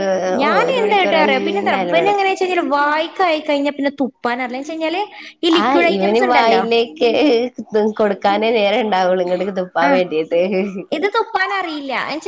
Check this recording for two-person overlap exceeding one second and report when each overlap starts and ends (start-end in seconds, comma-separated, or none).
0.7-2.2